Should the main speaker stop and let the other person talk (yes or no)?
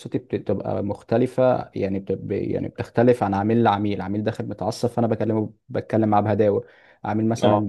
no